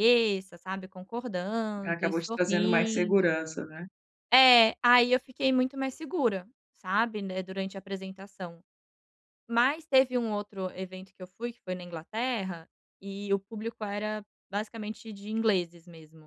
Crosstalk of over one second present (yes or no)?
yes